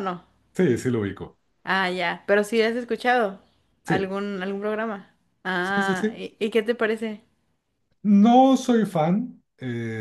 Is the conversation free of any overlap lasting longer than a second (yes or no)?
yes